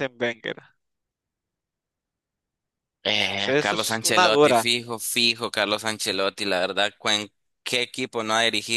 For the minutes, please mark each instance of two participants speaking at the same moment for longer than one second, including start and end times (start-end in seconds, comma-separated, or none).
3.4-4.7